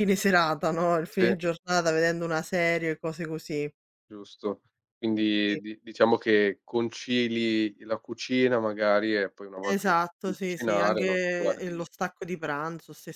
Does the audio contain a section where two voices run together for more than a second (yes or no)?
yes